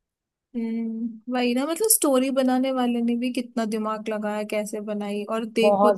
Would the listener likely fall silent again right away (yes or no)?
yes